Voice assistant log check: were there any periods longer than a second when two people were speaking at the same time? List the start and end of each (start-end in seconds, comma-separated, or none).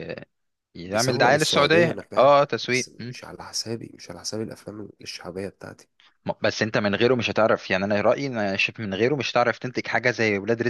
0.8-3.2